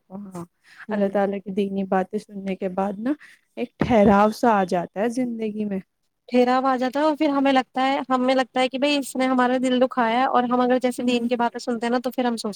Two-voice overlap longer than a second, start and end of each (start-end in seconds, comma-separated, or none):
none